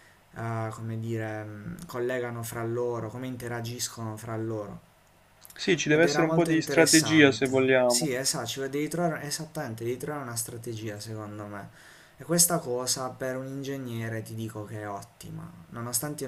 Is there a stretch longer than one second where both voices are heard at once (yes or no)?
yes